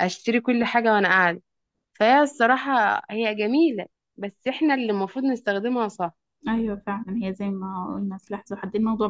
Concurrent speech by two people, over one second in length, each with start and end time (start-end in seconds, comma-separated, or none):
none